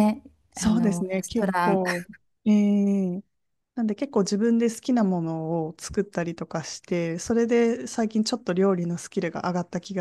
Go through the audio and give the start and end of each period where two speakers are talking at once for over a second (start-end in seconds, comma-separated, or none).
0.5-1.8